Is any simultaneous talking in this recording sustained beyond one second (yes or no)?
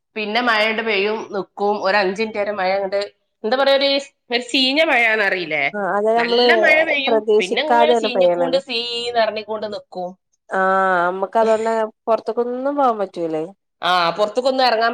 yes